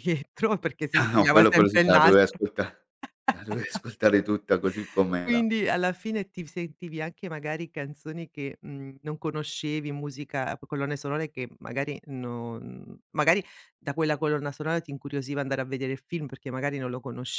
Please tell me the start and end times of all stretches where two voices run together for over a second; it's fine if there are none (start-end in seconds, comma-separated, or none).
0.9-2.4